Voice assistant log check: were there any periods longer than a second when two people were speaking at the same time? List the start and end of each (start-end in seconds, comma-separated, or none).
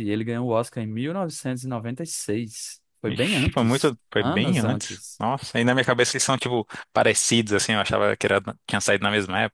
3.1-5.2